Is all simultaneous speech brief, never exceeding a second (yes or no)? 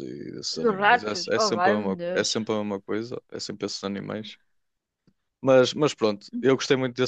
no